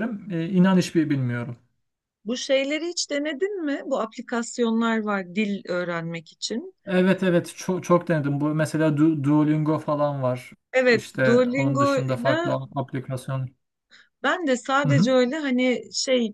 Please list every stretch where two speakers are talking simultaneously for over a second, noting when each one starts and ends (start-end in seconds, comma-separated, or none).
10.9-12.5